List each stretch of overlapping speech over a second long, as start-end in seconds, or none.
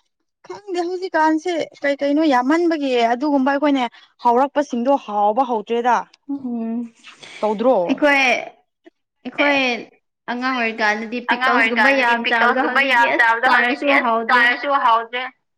11.3-14.4